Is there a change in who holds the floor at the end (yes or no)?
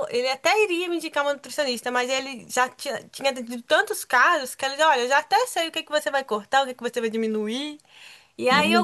no